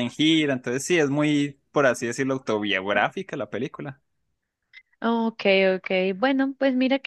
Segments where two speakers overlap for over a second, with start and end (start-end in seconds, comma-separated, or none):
none